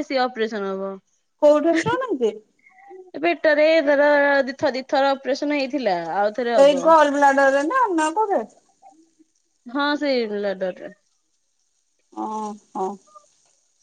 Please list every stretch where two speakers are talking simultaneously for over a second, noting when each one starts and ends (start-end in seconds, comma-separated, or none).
none